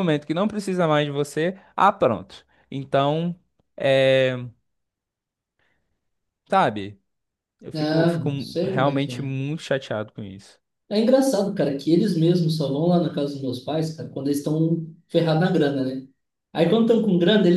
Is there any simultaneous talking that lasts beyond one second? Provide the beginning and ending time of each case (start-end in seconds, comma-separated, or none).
7.7-9.3